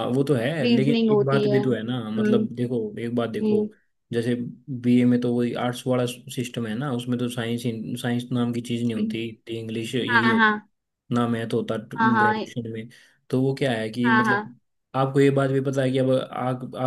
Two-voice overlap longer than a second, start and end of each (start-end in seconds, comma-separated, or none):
0.6-2.4